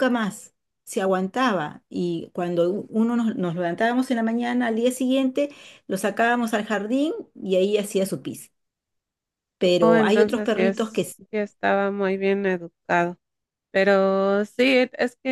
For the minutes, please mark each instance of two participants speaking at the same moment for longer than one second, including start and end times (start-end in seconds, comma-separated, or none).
9.8-11.3